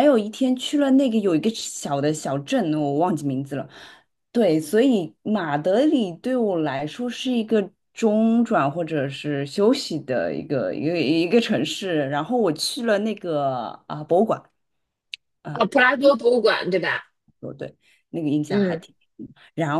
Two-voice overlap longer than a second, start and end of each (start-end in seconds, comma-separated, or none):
none